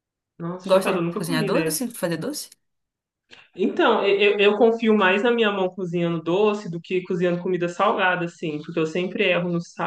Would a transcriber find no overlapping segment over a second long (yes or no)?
no